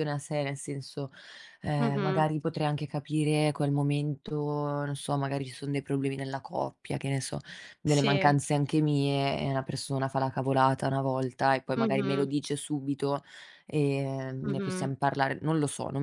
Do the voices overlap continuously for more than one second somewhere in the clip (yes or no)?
no